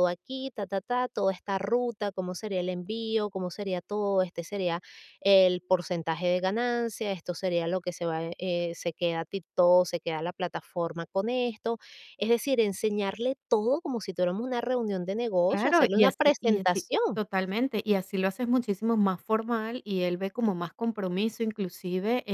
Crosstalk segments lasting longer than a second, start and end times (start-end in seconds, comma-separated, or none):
15.5-17.2